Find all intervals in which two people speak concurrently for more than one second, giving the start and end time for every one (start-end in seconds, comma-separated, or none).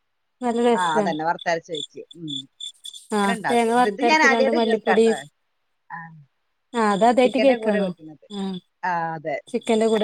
3.2-5.0